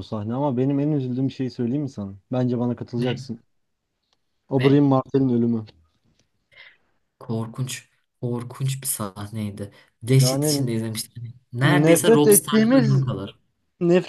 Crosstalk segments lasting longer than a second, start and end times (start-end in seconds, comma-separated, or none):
11.6-13.1